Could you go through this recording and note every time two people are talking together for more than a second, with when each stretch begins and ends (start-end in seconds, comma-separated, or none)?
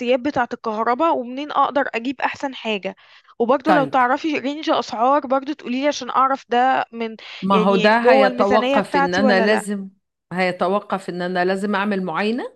7.5-9.6